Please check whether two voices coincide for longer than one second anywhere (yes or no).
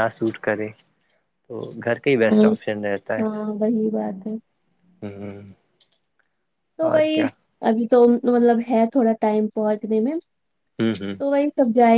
no